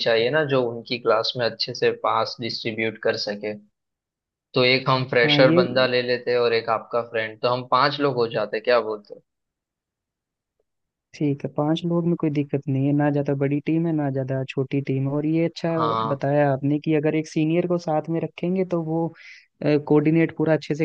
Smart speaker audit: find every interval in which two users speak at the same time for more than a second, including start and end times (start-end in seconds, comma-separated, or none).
none